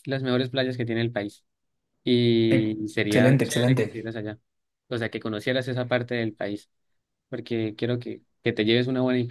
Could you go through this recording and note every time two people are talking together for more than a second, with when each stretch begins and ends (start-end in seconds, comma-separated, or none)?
2.5-4.1